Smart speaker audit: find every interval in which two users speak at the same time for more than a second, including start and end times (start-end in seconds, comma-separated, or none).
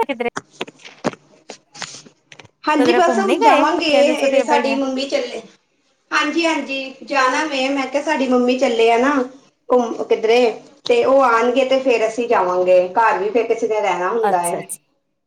2.8-4.8